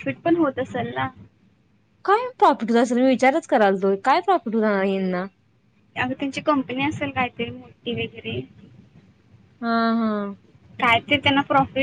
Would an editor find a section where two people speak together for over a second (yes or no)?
no